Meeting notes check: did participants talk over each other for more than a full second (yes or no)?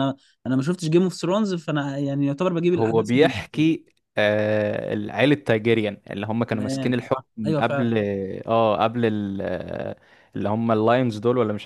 yes